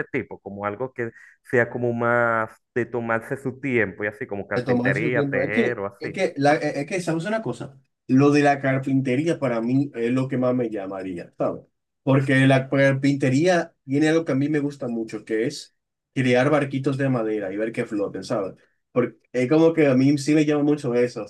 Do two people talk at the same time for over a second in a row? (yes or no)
yes